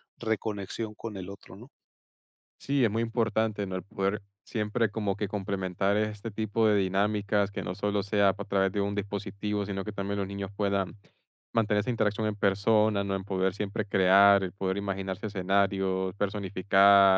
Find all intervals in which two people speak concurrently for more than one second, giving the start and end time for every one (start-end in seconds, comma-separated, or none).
none